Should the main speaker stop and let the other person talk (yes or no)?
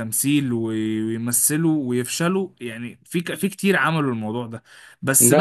no